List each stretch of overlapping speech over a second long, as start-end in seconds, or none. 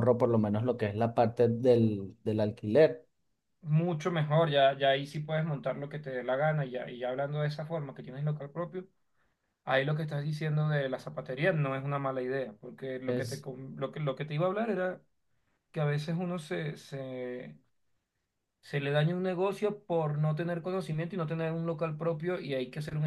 none